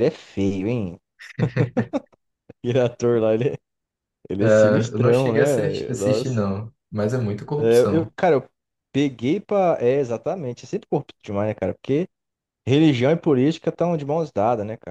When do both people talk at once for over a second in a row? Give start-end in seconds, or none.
4.5-6.4